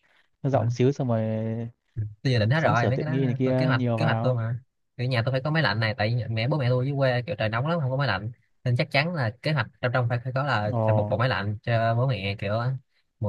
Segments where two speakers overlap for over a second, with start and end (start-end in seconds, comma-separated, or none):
2.5-4.4